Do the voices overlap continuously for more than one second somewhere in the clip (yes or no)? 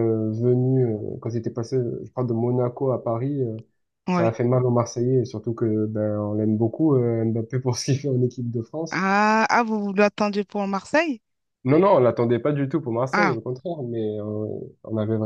no